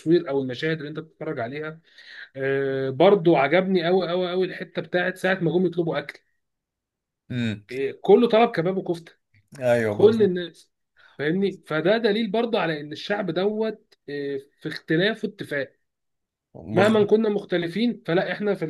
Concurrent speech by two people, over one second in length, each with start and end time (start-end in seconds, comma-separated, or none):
none